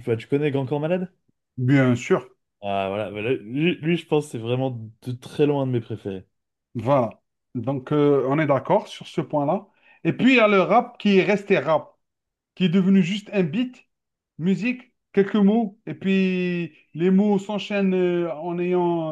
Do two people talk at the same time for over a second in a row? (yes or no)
no